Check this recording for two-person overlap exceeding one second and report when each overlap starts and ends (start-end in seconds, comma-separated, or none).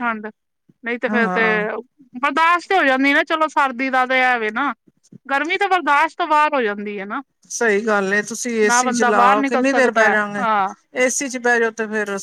8.7-10.4